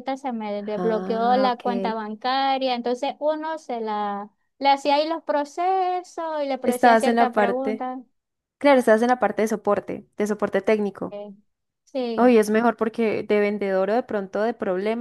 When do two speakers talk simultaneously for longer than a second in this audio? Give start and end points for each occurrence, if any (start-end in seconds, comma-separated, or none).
0.8-2.0, 6.6-7.9